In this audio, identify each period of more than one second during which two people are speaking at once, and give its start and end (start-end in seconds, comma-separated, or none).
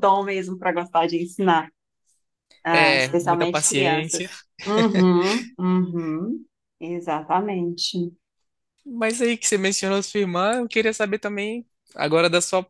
2.7-4.2